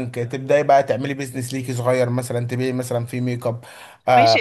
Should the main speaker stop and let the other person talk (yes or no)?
yes